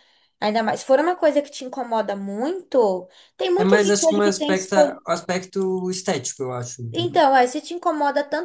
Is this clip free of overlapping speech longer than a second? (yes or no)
no